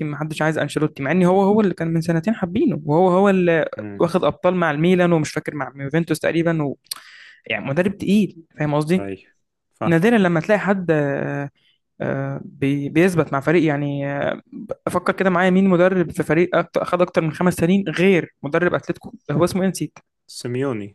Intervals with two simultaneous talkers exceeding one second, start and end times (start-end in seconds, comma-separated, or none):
none